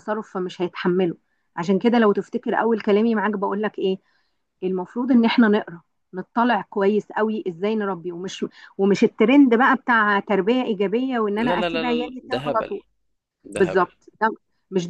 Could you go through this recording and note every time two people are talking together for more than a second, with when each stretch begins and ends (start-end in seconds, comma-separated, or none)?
11.4-12.7